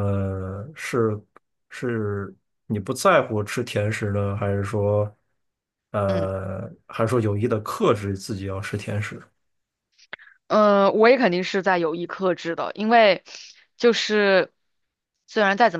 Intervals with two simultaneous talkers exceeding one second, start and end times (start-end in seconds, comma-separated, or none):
none